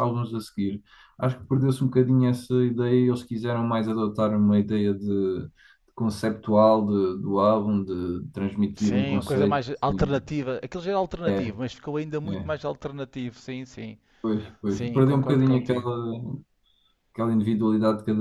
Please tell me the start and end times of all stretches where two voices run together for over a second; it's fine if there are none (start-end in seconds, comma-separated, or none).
8.8-10.4, 14.7-15.9